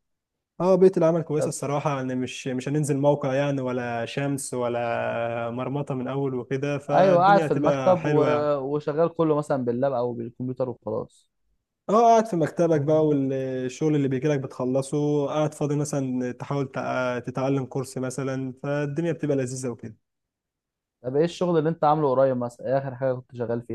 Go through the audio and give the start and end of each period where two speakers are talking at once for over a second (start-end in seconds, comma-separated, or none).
6.9-8.2